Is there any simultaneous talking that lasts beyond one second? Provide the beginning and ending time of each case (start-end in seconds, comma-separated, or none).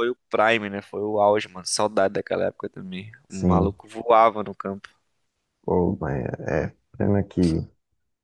none